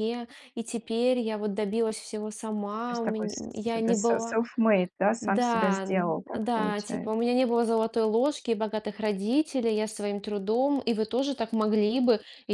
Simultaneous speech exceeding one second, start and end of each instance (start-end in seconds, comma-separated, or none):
2.9-4.4, 5.2-7.2